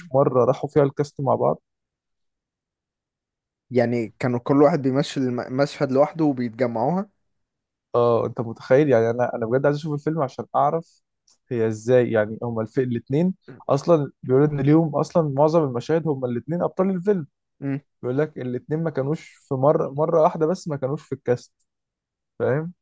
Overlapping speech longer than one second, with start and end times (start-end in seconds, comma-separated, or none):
none